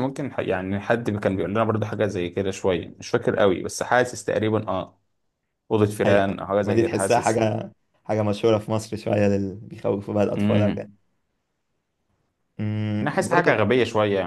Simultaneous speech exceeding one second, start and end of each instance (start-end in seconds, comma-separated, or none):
6.0-7.5